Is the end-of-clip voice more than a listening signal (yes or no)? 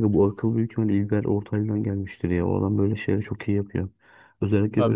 yes